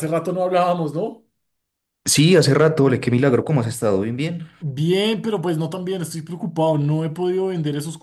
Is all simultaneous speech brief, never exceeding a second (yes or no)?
yes